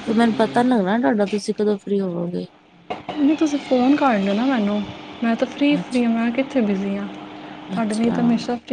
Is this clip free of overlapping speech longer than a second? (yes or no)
yes